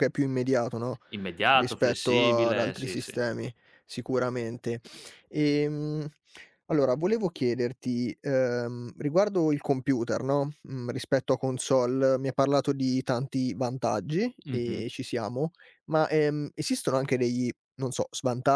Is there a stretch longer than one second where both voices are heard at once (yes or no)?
yes